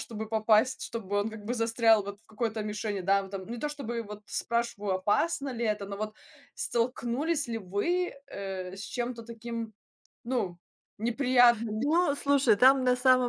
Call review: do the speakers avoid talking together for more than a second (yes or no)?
yes